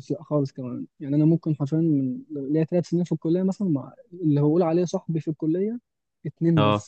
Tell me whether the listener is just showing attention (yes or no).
yes